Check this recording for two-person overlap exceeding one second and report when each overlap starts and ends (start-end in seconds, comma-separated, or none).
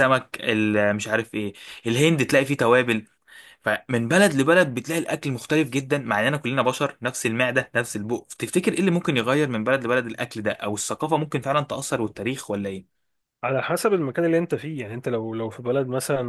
none